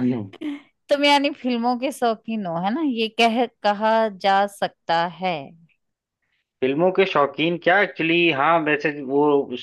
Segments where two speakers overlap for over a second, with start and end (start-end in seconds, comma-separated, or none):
none